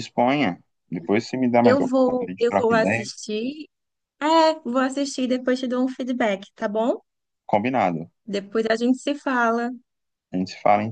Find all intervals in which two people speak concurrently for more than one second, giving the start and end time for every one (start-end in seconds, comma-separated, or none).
1.6-3.1